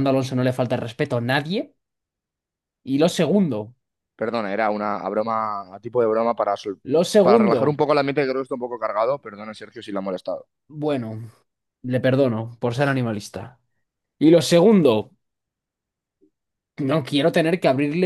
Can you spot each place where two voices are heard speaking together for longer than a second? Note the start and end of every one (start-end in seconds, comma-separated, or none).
none